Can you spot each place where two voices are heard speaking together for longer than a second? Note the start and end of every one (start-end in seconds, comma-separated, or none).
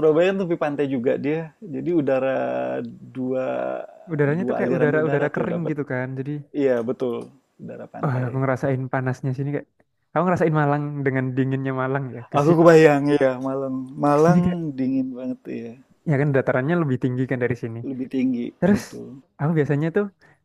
4.3-5.7